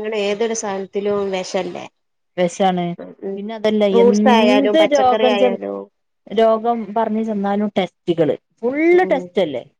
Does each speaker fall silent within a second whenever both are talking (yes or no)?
no